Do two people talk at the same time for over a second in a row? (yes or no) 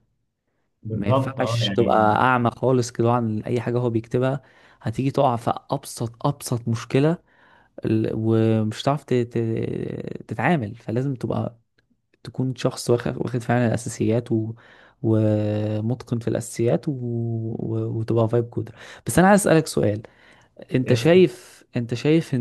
yes